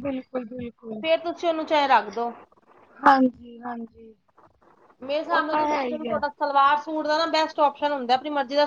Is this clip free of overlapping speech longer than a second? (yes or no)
yes